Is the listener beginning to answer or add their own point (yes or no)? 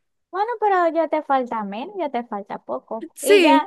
no